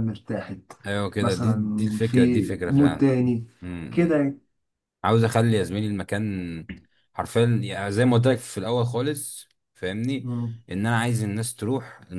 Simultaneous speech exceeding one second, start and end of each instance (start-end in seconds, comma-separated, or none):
1.2-3.1